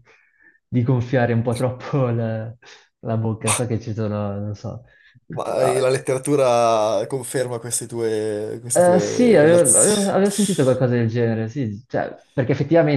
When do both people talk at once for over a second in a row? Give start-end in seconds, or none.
8.7-10.2